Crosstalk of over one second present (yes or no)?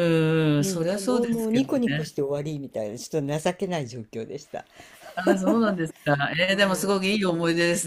yes